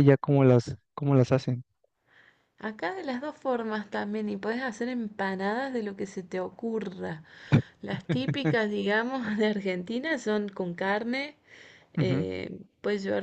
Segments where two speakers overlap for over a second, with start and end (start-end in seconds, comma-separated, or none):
none